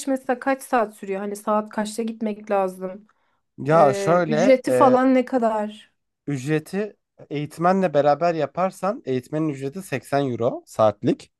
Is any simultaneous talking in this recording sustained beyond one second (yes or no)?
yes